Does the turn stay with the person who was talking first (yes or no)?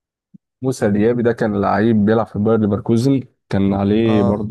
yes